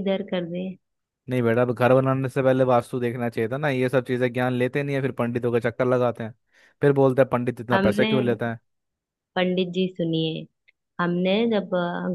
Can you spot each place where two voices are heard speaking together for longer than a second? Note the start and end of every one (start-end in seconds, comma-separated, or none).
none